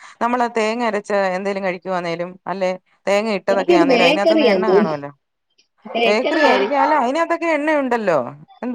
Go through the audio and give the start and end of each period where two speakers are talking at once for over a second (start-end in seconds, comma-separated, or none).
3.5-5.0